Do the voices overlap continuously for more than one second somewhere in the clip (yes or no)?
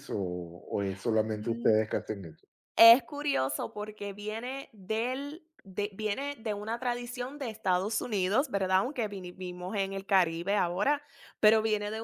no